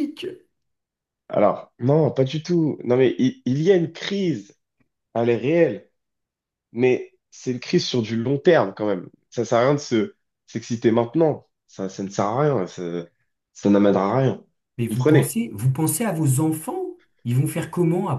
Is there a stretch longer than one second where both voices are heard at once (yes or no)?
no